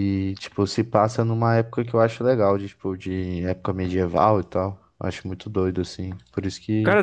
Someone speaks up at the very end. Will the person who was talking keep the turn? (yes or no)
no